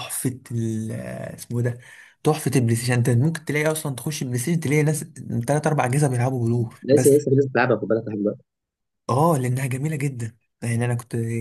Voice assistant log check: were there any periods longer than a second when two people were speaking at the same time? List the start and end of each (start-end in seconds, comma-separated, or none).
none